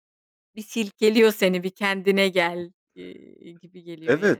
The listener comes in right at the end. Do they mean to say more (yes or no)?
yes